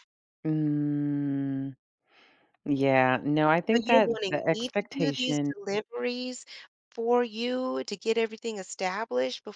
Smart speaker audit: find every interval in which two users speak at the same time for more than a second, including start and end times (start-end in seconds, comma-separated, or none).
3.7-5.5